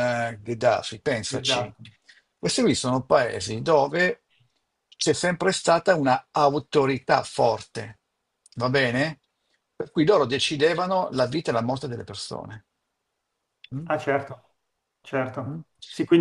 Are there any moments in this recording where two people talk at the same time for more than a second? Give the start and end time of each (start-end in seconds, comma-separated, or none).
none